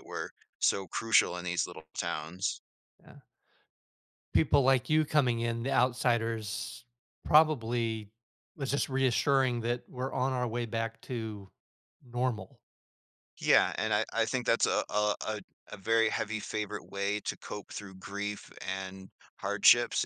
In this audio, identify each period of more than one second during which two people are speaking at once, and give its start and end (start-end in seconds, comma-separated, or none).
none